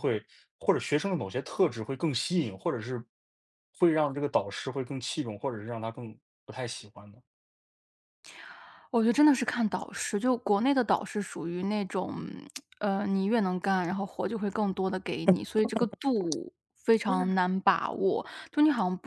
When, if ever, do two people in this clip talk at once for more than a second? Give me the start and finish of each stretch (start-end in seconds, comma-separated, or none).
none